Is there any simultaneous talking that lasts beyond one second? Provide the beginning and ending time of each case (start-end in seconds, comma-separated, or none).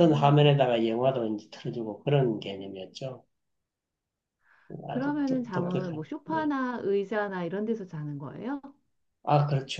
4.9-6.5